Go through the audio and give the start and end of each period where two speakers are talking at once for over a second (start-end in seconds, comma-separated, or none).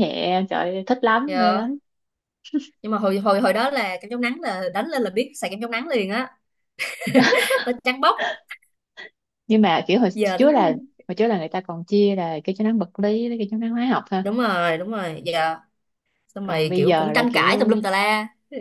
16.4-17.7